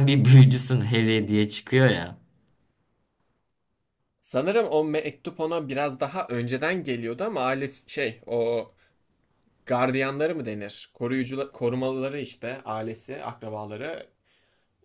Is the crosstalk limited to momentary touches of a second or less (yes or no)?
yes